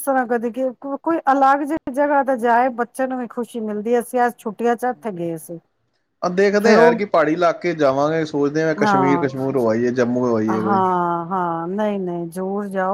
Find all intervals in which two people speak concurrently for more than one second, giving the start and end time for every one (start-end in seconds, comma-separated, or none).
none